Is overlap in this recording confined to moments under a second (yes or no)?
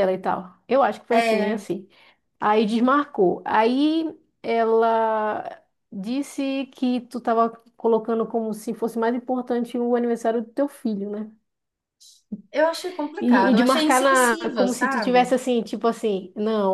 no